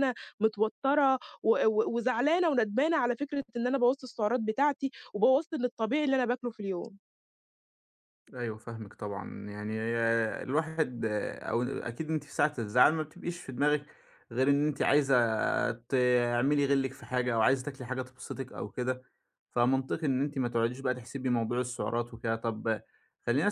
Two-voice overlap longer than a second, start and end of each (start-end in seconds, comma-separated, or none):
none